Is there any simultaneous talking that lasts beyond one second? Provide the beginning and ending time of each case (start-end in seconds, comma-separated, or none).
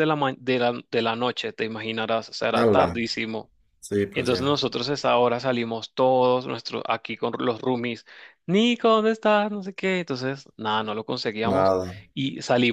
none